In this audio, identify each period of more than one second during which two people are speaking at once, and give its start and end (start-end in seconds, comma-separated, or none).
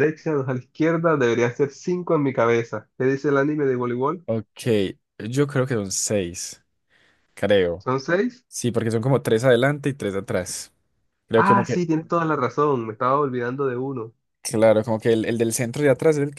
none